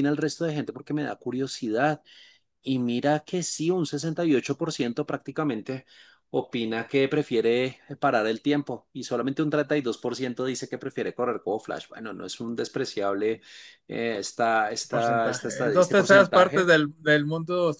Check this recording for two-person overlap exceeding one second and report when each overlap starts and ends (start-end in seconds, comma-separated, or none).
14.9-16.7